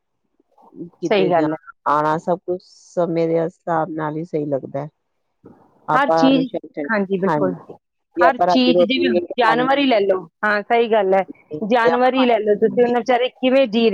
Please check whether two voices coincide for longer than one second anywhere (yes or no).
yes